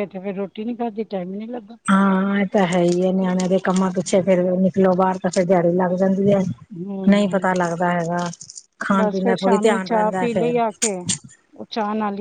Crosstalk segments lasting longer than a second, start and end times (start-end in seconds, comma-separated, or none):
9.0-10.5